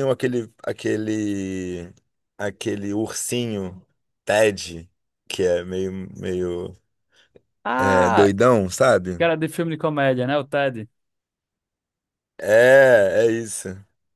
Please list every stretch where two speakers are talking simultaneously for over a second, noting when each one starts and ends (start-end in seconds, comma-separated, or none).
none